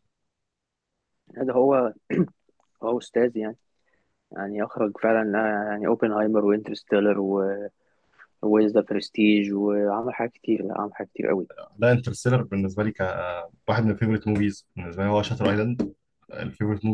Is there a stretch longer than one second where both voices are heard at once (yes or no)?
no